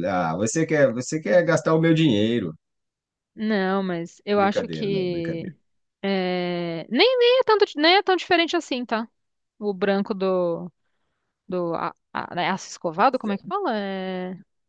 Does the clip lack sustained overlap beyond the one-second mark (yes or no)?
no